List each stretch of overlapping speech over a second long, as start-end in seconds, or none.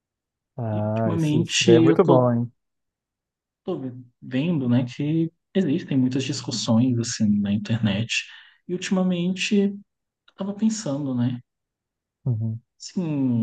0.7-2.3